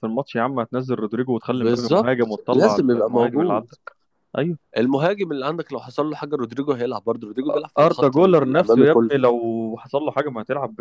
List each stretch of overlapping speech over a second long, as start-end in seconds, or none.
1.5-3.6, 7.8-9.1